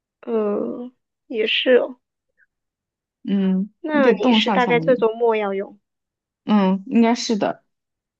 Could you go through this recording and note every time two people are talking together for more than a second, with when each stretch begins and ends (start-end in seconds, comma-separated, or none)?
3.8-5.0